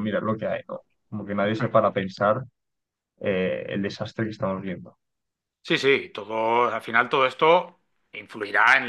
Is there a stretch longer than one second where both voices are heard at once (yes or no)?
no